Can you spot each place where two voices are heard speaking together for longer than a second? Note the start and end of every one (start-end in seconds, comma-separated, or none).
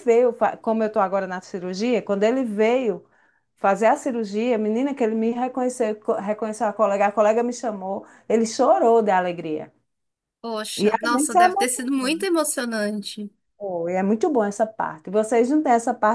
10.8-12.0